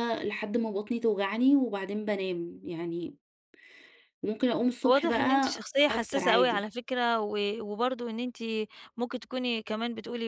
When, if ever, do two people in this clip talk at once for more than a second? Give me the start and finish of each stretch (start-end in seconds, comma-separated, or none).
4.9-6.7